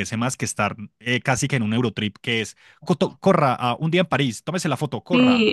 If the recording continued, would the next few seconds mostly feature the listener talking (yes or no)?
yes